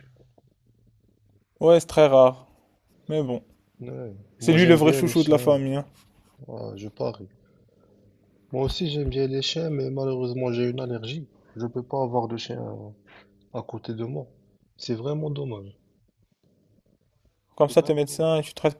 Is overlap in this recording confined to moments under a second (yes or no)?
no